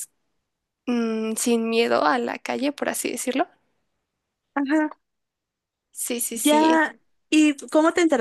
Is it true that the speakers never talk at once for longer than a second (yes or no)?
yes